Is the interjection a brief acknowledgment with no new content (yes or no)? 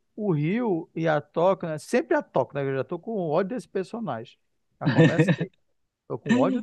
no